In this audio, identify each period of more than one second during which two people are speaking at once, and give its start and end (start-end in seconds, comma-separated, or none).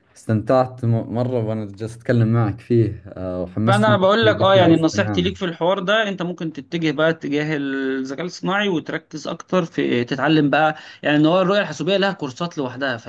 3.7-5.3